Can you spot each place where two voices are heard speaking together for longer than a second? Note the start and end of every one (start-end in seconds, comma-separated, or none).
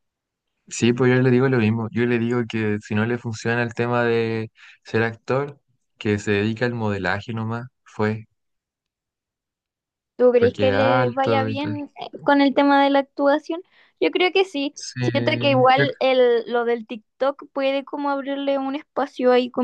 10.3-11.8